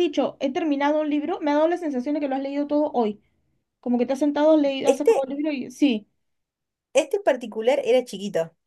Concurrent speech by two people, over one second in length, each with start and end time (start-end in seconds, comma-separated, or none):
none